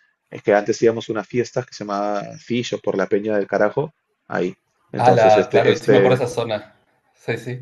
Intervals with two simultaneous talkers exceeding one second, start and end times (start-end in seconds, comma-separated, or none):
5.0-6.2